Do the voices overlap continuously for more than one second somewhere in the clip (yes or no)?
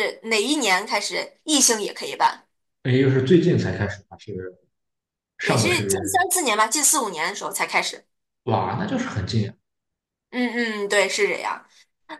no